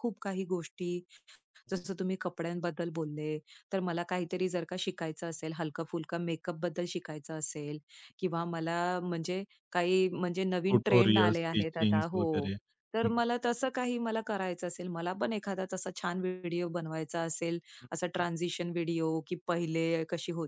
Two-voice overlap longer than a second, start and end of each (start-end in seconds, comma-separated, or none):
10.7-12.2